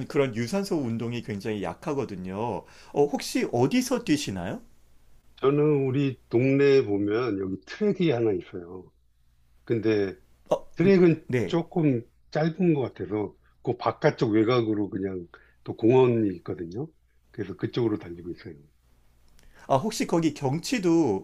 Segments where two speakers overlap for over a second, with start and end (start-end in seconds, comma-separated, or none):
none